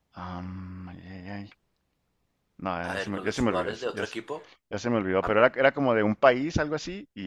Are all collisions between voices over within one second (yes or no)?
no